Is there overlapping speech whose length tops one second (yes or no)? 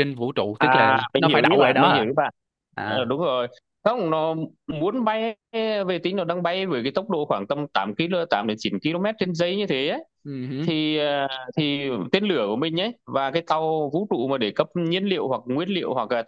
yes